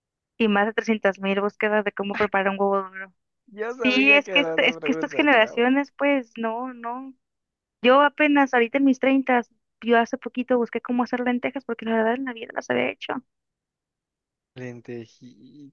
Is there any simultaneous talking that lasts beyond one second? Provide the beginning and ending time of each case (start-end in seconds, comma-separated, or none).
3.7-5.7